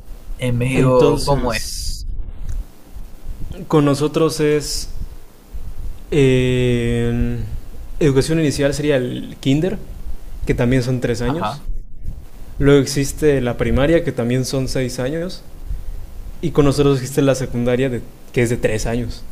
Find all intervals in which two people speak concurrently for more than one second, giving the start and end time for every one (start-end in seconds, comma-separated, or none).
0.7-2.0